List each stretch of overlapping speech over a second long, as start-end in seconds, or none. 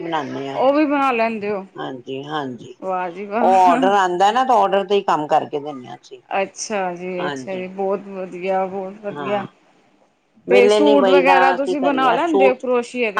10.5-12.6